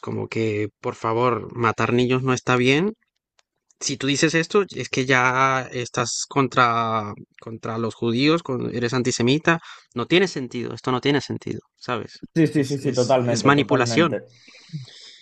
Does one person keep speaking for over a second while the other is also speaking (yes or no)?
yes